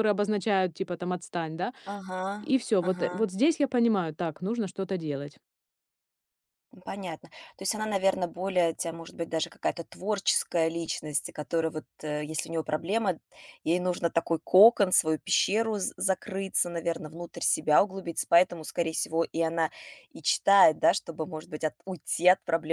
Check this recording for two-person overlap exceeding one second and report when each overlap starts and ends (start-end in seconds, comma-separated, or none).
none